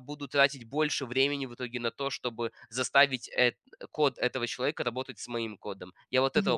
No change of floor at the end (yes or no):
no